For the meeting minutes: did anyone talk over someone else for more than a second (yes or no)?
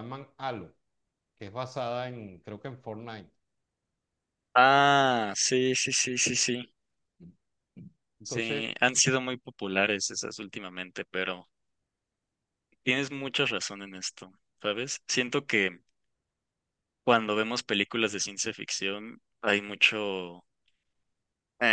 no